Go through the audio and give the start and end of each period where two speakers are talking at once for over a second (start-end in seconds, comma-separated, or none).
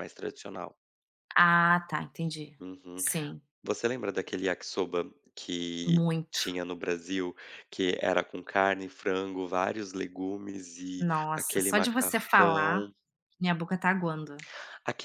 11.0-12.9